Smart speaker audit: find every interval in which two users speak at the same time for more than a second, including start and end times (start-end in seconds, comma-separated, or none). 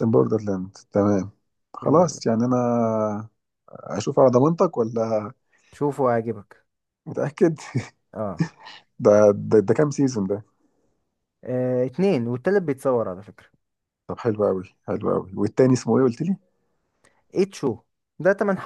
none